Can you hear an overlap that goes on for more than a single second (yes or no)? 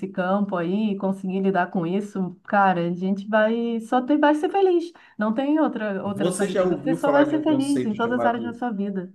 yes